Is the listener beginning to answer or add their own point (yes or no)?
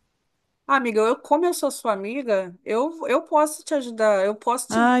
yes